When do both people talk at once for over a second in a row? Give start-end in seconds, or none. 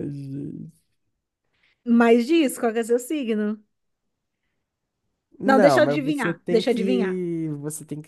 5.4-7.2